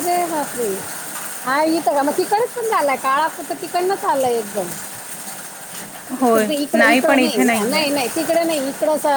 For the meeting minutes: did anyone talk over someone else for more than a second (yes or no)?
yes